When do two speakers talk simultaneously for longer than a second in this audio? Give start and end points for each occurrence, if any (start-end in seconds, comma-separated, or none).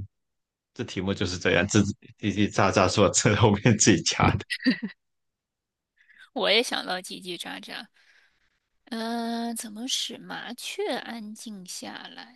none